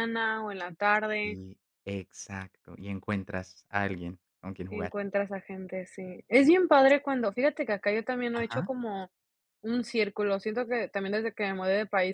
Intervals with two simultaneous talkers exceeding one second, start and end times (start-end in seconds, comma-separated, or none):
none